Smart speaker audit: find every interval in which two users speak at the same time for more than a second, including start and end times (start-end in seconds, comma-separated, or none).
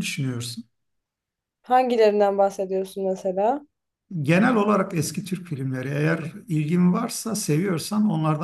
none